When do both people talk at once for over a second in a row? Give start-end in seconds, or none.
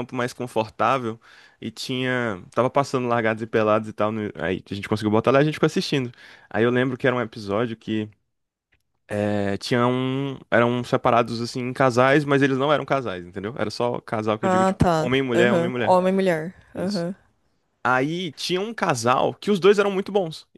14.4-16.0